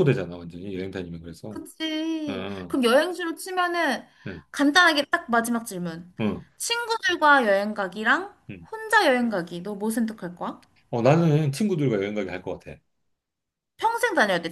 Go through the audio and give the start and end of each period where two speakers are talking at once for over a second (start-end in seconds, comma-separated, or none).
none